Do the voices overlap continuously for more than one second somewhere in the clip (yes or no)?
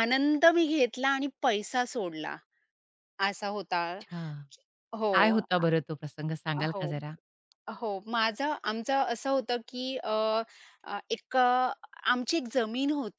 no